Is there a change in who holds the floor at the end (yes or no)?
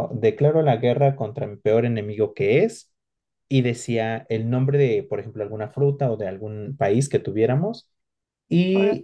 no